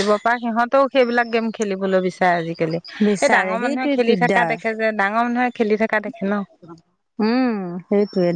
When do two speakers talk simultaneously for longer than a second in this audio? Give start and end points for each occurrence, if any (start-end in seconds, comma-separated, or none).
3.1-4.5